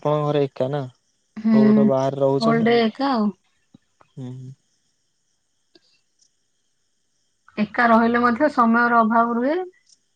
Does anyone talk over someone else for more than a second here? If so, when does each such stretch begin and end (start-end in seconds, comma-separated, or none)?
1.4-3.2